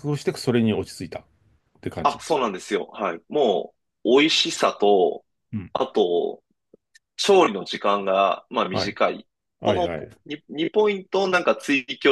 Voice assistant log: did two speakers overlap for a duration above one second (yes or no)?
no